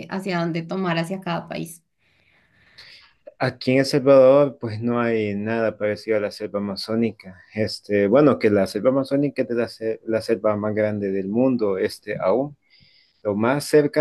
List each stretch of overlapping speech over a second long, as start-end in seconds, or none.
none